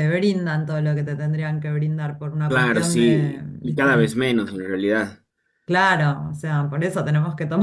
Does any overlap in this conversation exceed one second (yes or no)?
yes